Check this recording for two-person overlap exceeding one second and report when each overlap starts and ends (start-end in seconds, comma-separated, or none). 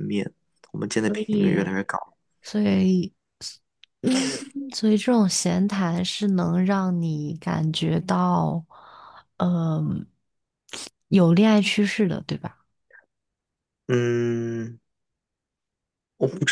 none